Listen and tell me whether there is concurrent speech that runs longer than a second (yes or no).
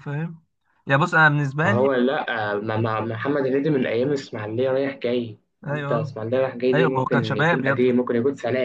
yes